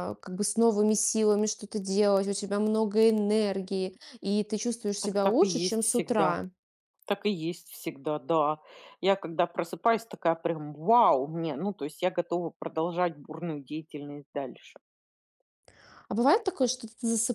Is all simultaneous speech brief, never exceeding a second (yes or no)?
no